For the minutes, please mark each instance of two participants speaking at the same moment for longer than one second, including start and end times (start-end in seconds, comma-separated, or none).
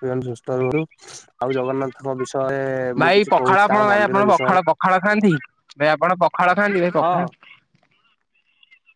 3.0-4.6